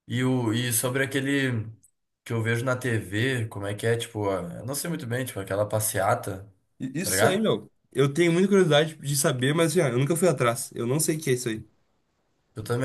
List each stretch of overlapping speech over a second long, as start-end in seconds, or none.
none